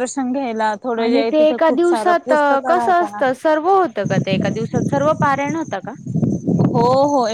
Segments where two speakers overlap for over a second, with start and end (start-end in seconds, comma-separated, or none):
1.1-3.2